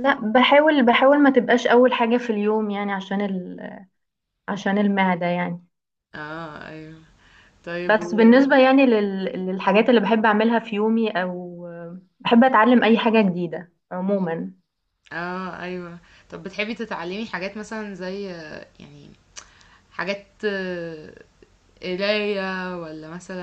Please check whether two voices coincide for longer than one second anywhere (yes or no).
no